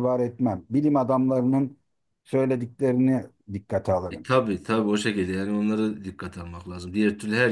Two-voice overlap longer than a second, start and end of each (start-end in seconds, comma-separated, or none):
none